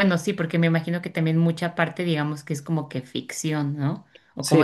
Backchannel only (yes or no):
yes